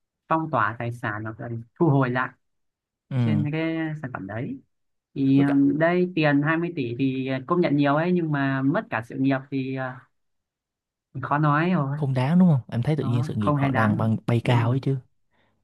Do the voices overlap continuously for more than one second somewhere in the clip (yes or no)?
yes